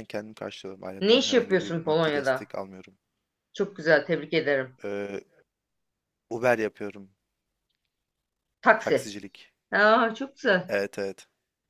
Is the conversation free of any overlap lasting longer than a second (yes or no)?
no